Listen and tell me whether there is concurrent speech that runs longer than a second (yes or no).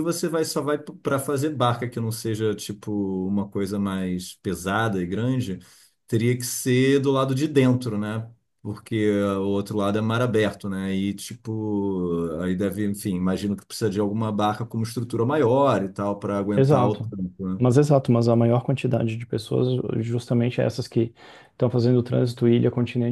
no